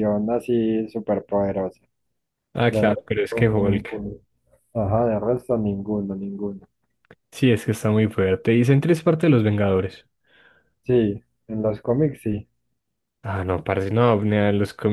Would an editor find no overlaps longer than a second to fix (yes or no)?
no